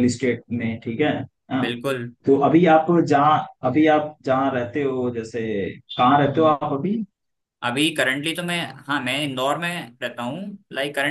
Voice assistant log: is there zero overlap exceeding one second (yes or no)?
yes